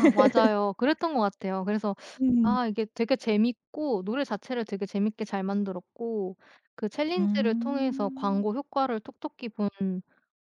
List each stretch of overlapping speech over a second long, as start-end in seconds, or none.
7.2-8.5